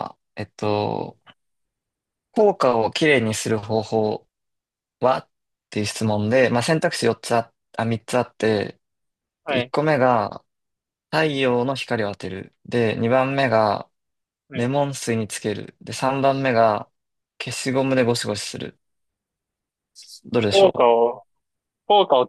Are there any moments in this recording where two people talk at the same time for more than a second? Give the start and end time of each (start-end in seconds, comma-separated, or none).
none